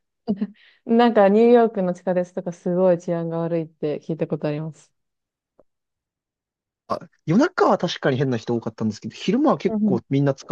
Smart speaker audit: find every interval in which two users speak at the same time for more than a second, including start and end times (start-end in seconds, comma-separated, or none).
none